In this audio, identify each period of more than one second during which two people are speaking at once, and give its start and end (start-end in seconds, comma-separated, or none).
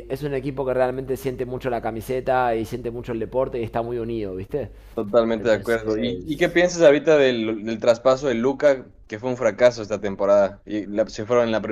5.4-6.6